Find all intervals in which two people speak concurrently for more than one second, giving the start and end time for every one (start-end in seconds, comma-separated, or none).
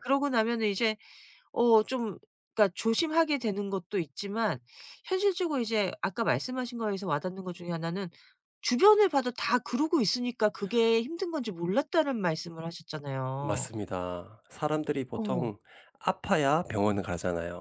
none